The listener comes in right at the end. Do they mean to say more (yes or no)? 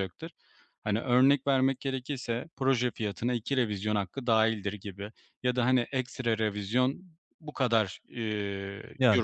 no